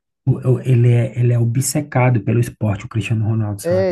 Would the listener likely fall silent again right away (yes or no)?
no